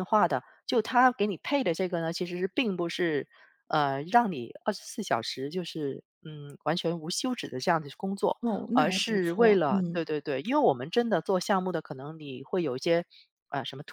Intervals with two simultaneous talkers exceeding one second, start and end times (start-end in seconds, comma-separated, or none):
8.7-10.1